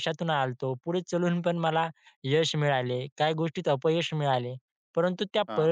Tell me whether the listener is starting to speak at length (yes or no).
no